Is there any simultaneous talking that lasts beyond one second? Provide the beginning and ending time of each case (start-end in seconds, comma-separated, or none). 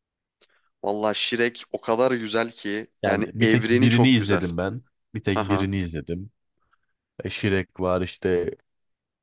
3.0-4.4